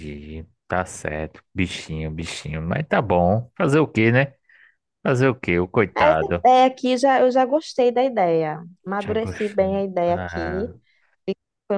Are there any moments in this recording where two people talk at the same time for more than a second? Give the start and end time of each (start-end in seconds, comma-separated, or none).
9.0-10.7